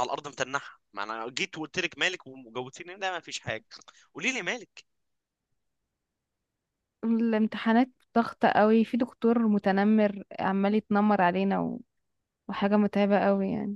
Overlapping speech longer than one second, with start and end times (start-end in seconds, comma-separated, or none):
none